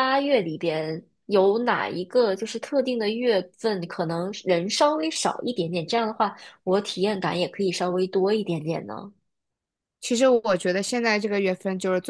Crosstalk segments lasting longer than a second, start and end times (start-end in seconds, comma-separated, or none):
none